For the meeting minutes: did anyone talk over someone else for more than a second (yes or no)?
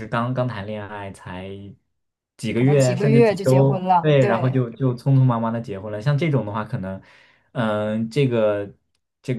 yes